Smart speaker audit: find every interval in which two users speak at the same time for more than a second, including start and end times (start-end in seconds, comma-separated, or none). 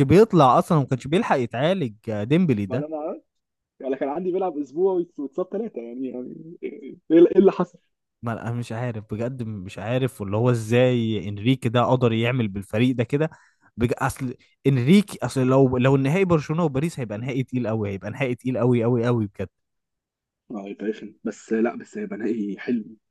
none